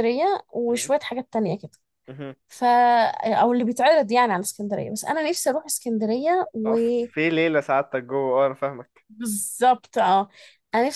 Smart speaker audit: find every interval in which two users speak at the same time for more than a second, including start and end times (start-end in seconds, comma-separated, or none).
none